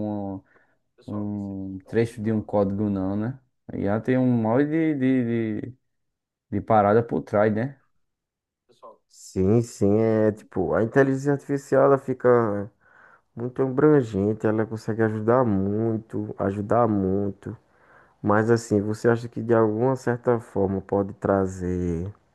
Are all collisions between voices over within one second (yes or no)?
yes